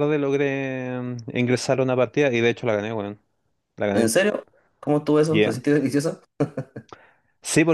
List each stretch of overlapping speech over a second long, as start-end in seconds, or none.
none